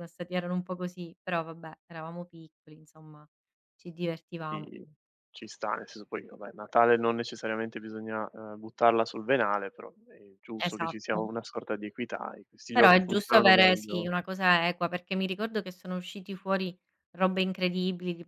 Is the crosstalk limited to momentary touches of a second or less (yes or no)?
no